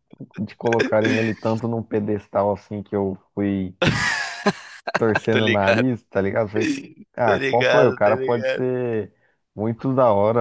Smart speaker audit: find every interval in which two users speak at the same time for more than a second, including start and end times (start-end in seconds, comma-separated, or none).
7.2-8.6